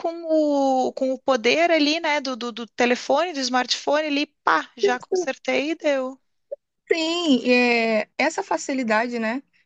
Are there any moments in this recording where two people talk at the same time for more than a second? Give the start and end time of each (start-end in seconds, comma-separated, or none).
none